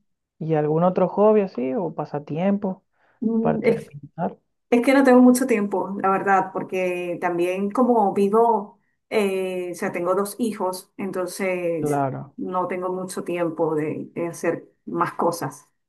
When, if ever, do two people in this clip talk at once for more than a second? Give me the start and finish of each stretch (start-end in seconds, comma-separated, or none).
none